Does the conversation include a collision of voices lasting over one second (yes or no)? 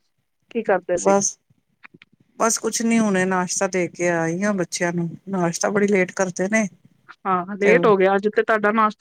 no